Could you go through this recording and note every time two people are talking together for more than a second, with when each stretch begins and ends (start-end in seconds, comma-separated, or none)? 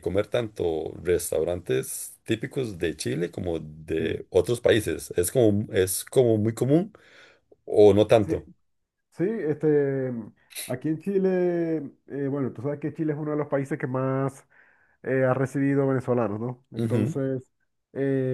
none